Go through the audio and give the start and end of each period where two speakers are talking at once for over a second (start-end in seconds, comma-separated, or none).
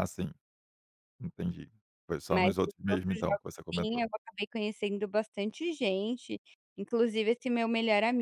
2.3-4.1